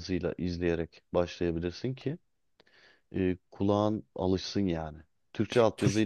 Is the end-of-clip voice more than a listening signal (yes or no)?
no